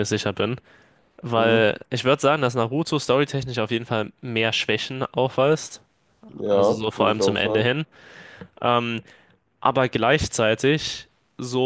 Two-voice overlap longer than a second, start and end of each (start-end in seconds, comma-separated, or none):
6.5-7.7